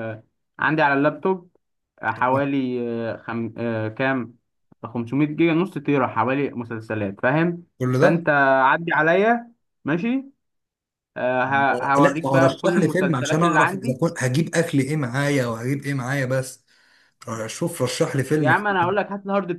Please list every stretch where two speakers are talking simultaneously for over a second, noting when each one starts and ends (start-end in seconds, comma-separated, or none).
11.5-14.0